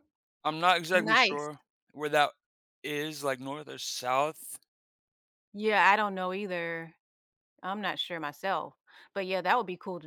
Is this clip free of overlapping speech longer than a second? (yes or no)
yes